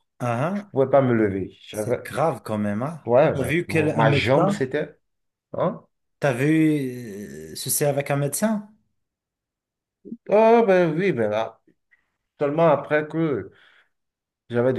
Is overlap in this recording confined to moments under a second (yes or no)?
no